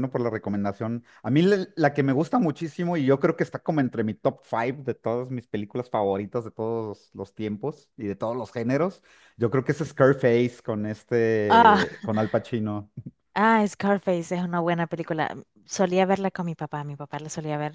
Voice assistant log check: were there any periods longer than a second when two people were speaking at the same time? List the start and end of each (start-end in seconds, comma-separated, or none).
none